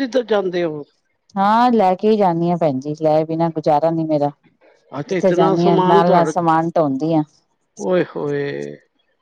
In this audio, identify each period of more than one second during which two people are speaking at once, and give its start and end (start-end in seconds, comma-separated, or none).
5.1-6.3